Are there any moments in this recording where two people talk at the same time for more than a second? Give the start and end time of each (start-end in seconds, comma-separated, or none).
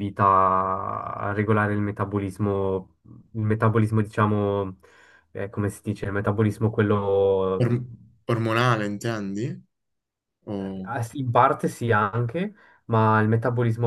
none